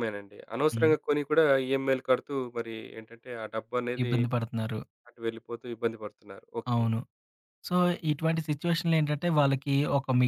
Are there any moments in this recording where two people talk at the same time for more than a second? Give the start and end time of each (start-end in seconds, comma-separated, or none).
none